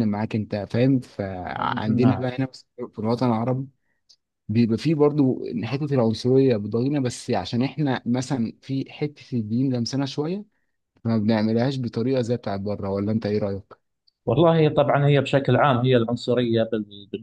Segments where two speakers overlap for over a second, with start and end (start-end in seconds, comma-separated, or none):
none